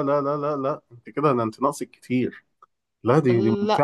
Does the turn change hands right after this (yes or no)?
no